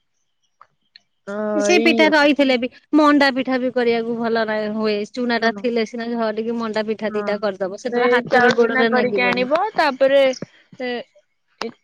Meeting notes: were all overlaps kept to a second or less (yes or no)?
no